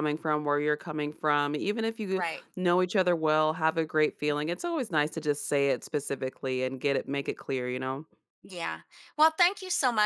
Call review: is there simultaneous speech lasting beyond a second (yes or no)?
no